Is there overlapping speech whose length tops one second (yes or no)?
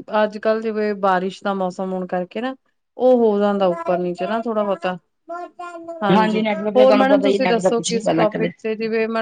yes